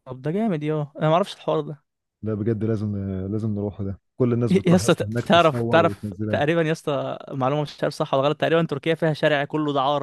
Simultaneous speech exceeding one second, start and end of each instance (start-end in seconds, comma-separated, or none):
4.5-6.4